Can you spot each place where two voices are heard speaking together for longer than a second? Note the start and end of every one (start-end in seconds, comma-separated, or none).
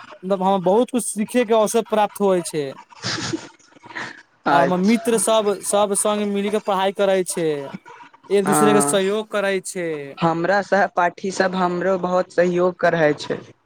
none